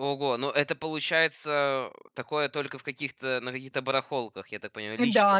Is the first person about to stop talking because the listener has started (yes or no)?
yes